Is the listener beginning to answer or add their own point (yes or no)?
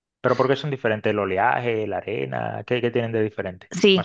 yes